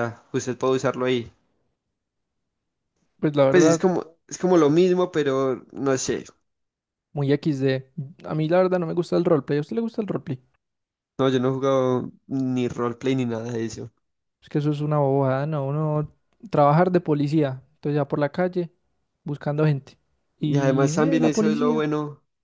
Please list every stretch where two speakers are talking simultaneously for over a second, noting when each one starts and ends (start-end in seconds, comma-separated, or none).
20.4-21.9